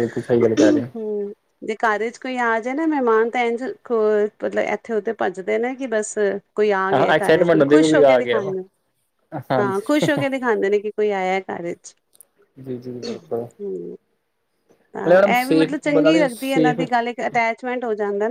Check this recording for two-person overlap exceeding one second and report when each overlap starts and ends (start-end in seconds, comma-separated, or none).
6.9-8.5, 15.1-16.8